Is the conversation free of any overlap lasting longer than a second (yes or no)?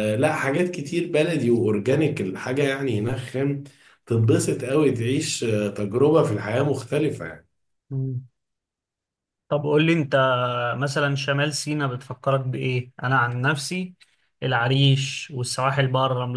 yes